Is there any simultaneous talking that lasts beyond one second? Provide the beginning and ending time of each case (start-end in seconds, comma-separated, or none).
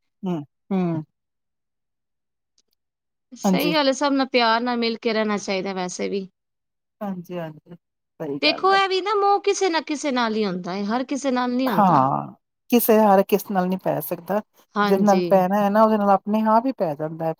none